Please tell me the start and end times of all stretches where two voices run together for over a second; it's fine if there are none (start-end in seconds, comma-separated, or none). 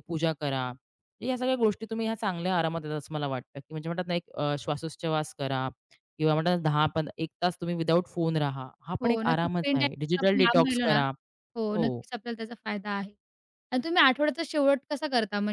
9.0-11.0